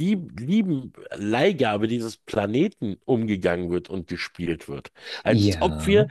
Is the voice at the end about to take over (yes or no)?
no